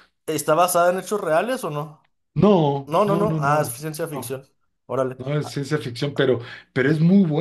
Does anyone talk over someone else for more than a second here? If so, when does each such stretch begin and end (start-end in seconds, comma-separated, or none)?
2.9-4.3